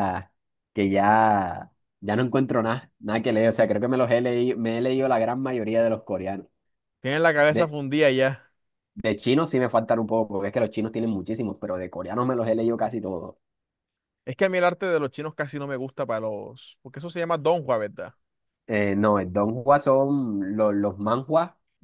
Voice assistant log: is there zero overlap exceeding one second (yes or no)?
yes